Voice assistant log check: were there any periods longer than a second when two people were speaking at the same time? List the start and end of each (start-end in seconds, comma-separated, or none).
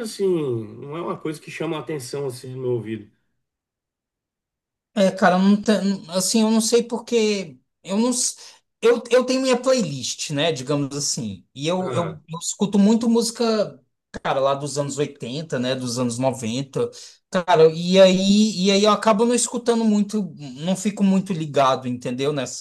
none